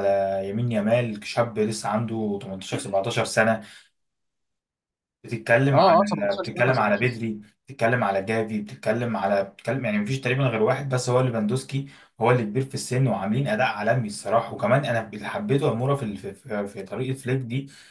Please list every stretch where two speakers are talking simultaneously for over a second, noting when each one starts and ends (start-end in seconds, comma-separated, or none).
5.7-7.2